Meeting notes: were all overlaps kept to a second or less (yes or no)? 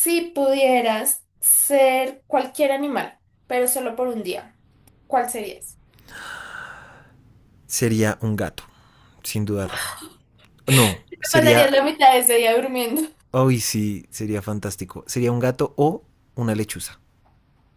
yes